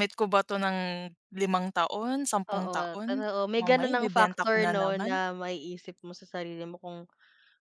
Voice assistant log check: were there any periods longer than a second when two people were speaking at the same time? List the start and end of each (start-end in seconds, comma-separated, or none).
2.5-5.2